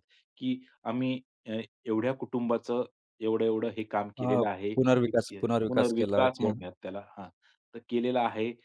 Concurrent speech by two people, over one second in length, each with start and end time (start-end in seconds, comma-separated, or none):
4.2-6.5